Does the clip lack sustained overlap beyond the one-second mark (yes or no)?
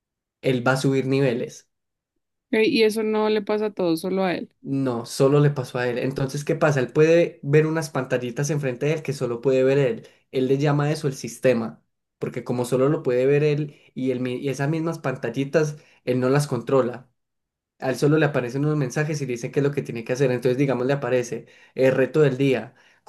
yes